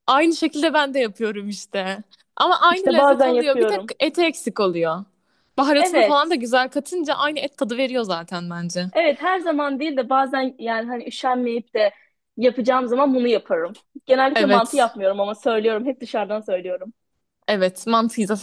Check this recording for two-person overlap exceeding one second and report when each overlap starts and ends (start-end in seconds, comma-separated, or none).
2.7-3.9